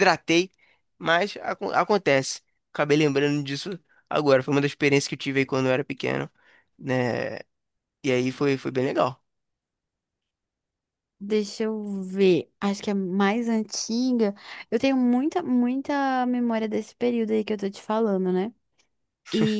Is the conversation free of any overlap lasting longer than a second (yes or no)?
yes